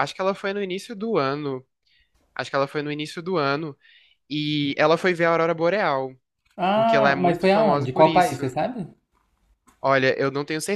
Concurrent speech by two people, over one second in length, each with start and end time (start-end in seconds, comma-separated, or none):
6.7-8.4